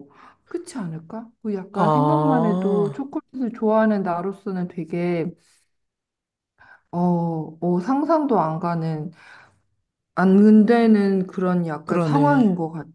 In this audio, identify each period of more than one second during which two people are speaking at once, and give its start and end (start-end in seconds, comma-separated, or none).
1.7-3.0